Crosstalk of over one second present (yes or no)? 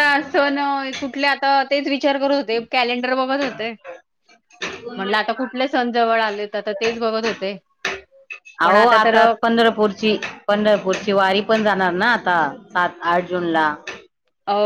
no